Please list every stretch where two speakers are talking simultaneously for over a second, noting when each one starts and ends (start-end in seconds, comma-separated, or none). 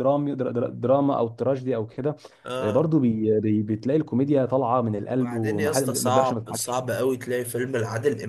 5.0-6.8